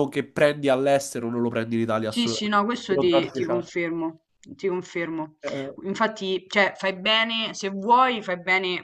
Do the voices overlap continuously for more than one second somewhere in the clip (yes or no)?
yes